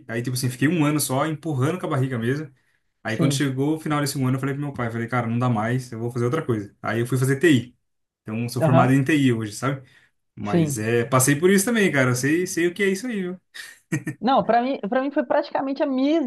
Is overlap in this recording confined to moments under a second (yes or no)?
yes